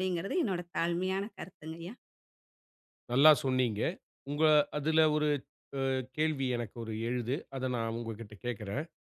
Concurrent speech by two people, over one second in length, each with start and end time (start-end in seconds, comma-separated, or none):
none